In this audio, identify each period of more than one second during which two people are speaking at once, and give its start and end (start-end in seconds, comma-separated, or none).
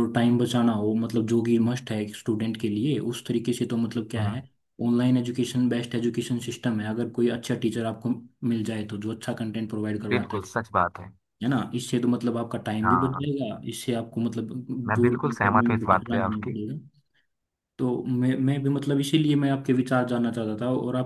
14.9-16.6